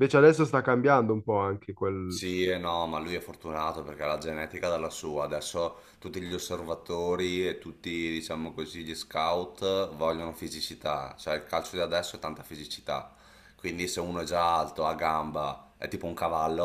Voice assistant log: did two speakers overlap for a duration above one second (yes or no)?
no